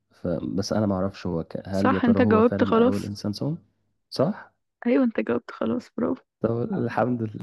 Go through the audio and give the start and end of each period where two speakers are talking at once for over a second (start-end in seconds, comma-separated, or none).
1.7-3.1